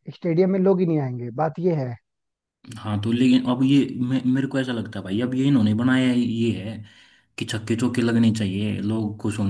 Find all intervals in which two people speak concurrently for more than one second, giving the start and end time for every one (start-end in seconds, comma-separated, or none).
none